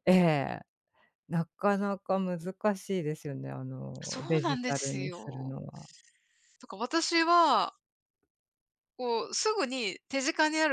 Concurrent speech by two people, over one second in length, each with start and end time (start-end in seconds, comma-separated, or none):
4.0-5.5